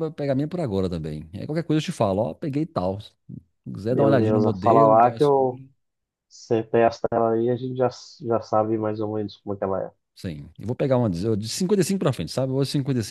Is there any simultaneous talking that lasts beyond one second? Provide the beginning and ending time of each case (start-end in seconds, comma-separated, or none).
3.9-5.6